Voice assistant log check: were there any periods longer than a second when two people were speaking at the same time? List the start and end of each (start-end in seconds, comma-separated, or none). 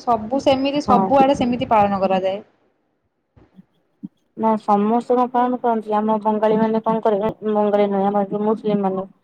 none